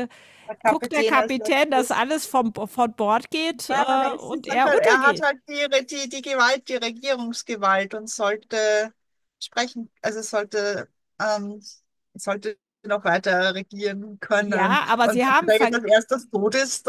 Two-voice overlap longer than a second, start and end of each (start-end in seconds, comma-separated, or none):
0.6-2.0, 3.7-5.3, 14.4-15.8